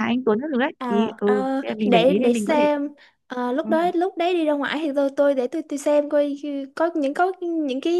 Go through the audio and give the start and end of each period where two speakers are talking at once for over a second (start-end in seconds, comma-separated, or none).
0.8-2.7